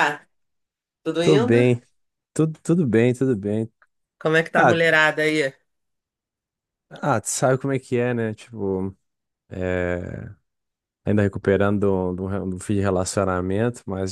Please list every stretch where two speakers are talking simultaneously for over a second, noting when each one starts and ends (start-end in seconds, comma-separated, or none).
none